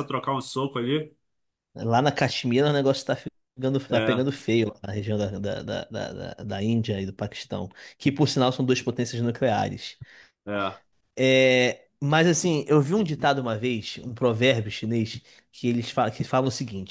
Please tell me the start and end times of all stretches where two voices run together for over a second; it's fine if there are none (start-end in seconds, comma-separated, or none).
none